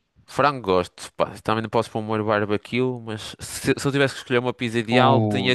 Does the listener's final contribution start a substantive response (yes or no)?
no